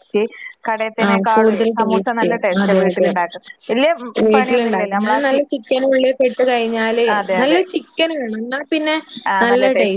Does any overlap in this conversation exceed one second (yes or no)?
yes